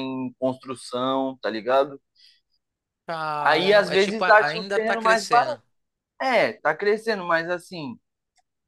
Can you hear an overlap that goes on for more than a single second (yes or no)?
yes